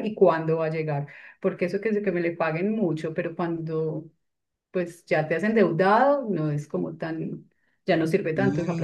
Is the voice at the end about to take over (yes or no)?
yes